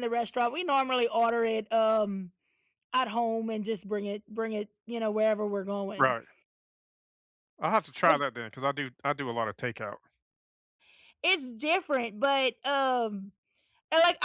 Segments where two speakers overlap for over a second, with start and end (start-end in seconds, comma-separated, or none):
none